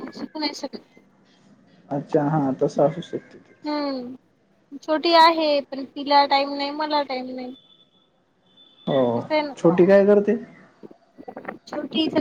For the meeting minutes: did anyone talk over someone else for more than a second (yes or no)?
no